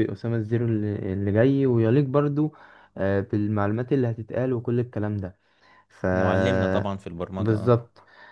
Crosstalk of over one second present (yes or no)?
no